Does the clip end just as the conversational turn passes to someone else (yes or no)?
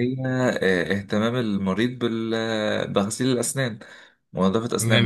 yes